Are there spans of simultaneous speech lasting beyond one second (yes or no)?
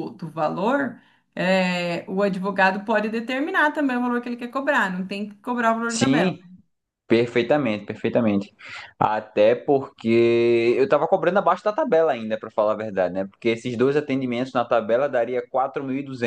no